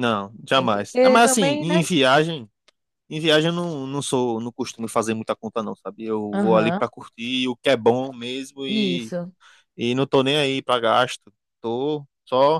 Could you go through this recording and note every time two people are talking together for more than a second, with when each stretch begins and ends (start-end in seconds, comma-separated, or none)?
0.5-1.9